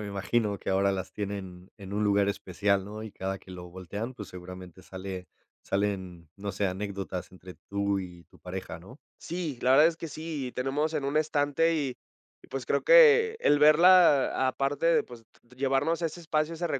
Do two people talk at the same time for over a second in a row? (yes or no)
no